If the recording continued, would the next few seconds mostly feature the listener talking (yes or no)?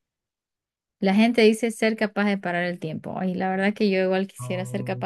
no